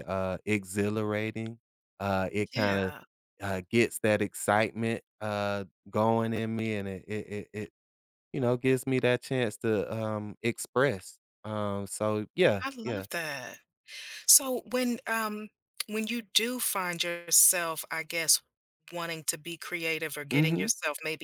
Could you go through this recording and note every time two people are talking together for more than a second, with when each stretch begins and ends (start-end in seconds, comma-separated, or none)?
none